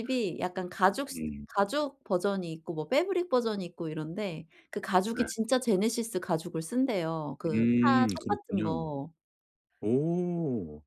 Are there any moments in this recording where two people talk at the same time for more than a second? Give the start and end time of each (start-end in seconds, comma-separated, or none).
7.5-8.8